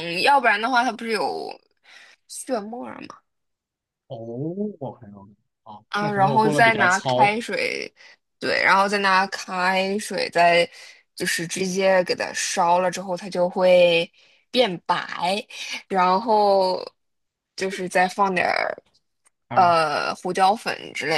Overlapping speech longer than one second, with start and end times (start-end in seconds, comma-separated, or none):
5.9-7.3